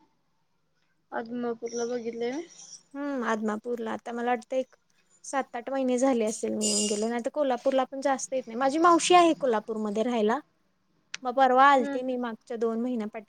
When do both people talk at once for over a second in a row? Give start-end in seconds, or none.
none